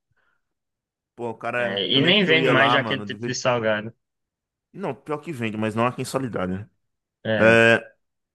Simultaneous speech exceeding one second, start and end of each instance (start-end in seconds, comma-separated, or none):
1.6-3.3